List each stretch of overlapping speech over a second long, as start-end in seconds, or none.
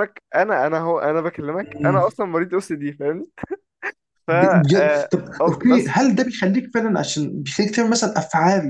4.3-5.9